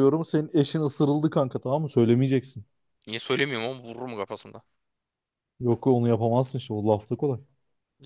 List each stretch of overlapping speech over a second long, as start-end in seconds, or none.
none